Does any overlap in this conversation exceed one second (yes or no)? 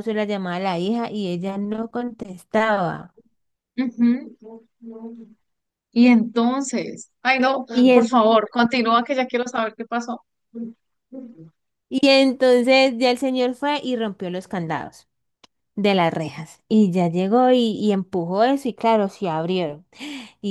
no